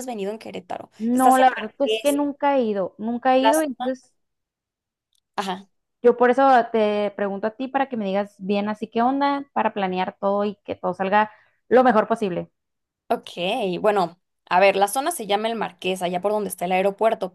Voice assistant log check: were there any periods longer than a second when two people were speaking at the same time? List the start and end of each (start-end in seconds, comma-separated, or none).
1.0-2.2